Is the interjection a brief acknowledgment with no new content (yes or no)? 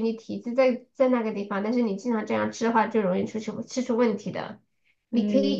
yes